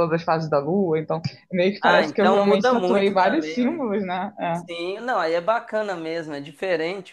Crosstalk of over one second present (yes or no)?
yes